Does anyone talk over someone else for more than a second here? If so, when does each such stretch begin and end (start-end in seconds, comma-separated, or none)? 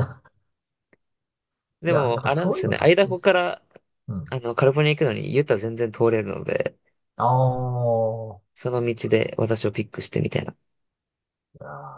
1.9-3.3